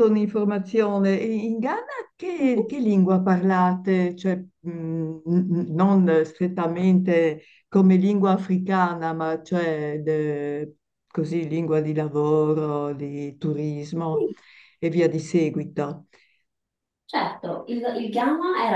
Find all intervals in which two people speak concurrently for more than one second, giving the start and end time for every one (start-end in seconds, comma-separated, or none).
none